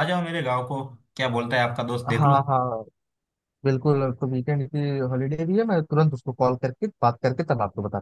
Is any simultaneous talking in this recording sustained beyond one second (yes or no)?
no